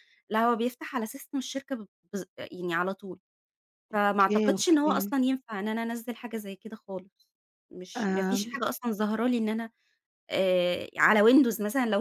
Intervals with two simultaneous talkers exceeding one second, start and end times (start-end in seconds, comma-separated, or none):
3.9-5.1